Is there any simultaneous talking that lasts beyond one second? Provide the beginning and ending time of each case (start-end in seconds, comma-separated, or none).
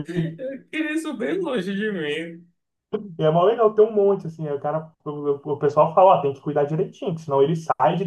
none